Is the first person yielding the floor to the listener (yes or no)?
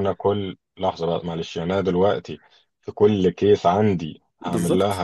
yes